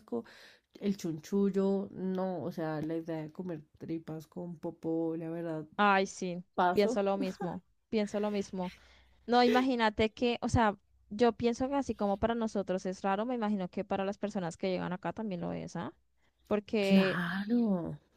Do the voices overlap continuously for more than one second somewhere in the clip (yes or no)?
no